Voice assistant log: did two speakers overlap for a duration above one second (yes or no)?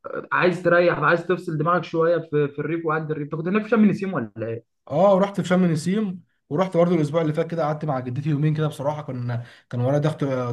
no